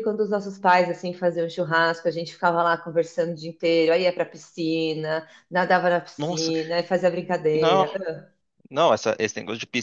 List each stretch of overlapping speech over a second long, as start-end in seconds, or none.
none